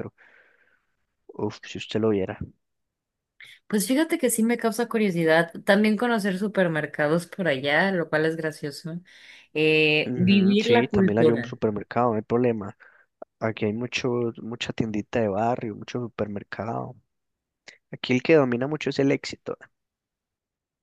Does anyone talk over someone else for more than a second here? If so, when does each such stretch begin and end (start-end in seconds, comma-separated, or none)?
10.1-11.6